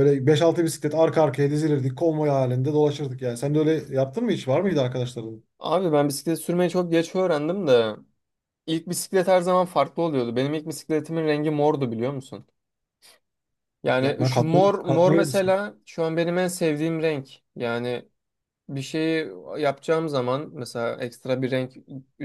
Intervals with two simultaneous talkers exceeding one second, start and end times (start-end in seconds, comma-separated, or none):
14.0-15.6